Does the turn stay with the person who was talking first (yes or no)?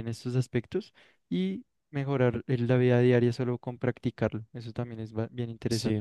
no